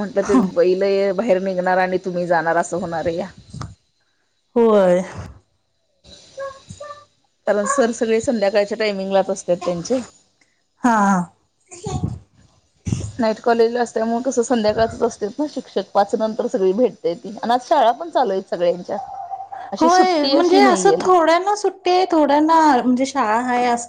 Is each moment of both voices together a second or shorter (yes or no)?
no